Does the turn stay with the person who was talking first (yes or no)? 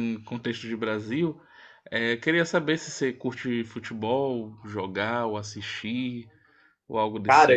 no